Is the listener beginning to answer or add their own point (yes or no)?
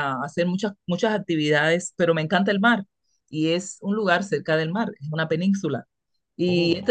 no